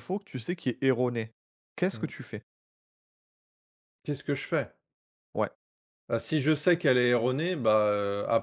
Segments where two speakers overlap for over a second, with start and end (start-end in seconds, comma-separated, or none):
none